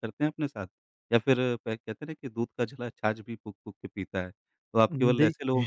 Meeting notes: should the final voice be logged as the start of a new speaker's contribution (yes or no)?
no